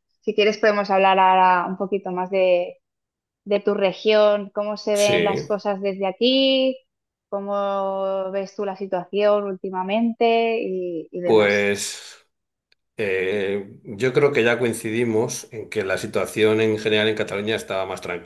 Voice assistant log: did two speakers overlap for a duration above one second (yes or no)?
no